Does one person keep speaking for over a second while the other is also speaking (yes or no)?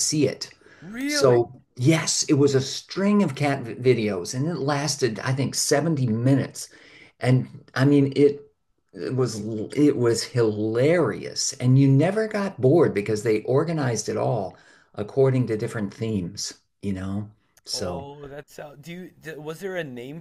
no